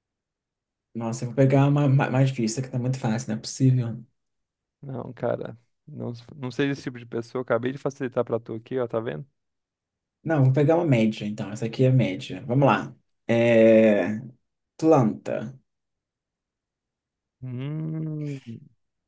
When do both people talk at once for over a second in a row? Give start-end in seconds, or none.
none